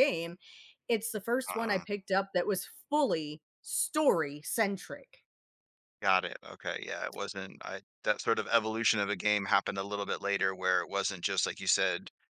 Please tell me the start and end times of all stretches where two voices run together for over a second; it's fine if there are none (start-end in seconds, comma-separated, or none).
none